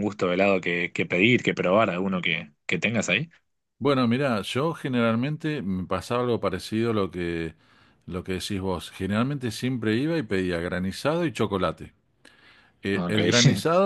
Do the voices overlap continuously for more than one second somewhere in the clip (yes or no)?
no